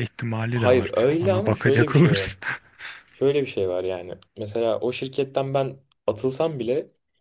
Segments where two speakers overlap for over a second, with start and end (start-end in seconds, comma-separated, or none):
0.5-2.3